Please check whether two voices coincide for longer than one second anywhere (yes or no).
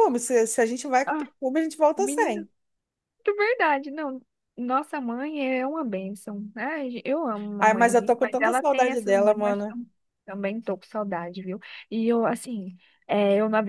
yes